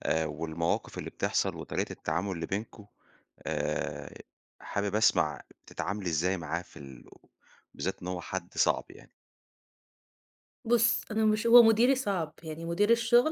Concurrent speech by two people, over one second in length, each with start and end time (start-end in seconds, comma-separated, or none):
none